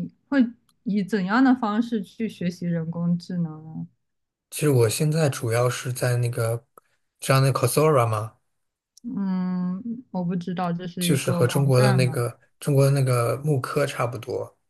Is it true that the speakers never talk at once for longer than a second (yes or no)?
no